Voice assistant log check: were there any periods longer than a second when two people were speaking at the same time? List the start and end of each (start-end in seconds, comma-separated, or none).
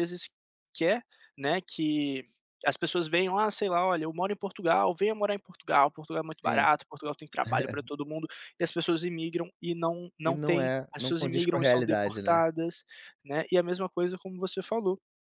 10.2-12.4